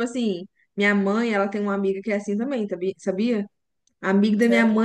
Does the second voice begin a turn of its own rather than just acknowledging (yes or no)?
no